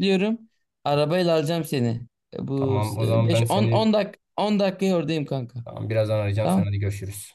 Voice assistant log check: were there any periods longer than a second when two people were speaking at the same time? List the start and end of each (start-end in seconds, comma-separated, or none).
2.6-3.9